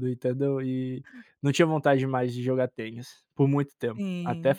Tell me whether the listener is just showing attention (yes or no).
yes